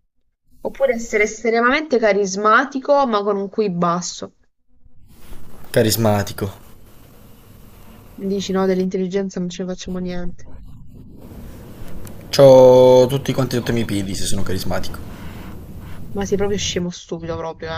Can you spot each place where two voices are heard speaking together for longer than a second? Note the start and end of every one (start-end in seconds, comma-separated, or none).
none